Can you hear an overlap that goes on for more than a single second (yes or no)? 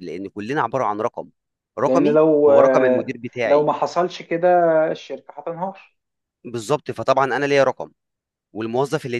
yes